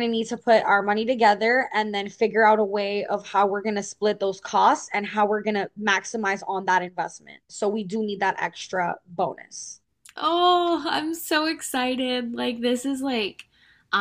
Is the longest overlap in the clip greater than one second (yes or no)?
no